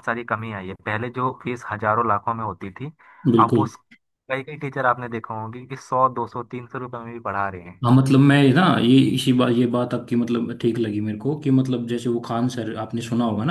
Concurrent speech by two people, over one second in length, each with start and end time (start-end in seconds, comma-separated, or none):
none